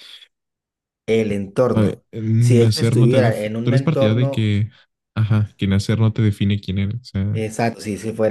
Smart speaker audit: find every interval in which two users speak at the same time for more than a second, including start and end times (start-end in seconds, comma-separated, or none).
1.7-4.5